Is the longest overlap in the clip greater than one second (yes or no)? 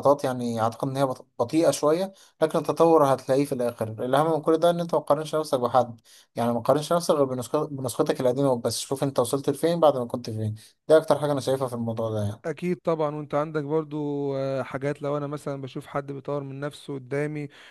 no